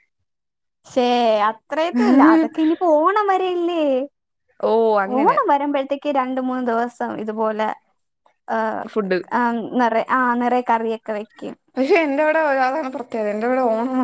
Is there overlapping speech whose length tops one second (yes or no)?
no